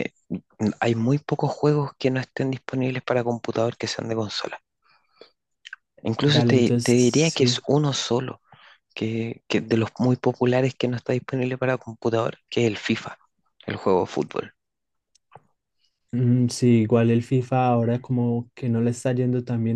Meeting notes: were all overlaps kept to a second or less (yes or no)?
no